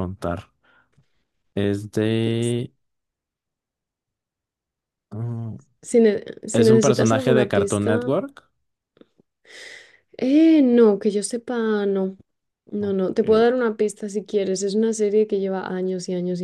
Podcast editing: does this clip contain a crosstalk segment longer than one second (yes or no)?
yes